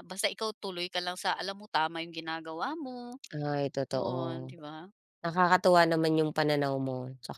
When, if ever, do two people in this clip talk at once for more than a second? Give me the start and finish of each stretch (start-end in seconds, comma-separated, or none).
none